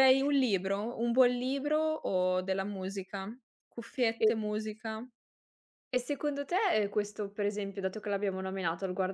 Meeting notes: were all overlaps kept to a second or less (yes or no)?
yes